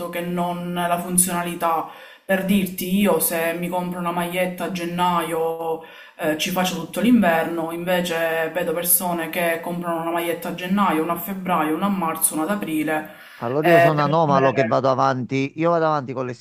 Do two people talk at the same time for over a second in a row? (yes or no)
yes